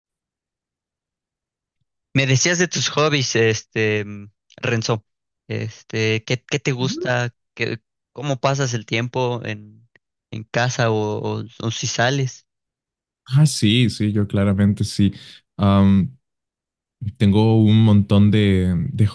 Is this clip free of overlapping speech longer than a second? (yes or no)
yes